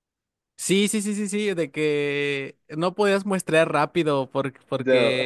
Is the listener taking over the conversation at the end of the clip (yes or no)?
no